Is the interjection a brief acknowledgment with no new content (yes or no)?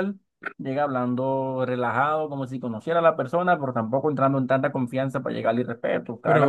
no